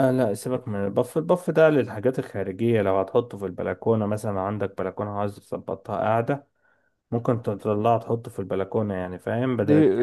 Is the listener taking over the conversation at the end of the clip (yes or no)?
yes